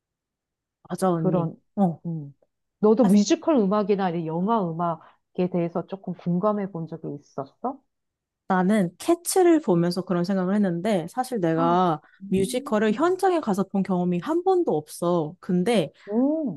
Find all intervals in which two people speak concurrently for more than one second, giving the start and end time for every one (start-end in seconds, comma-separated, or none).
11.5-13.2